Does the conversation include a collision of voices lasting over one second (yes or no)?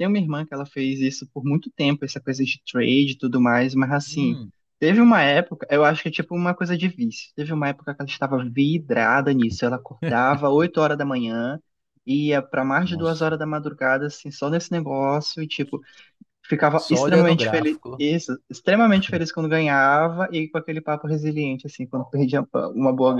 yes